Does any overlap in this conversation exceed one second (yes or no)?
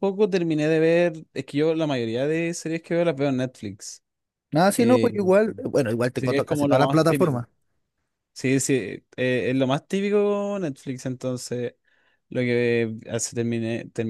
yes